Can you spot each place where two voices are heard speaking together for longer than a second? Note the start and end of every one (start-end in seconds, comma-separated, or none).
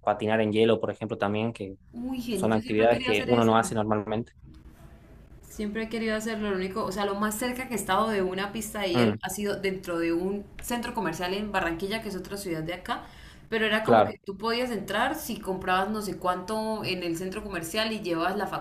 2.3-3.5